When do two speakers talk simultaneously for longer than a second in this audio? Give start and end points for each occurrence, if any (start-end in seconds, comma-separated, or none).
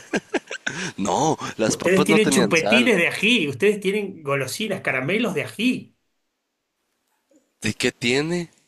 1.7-2.9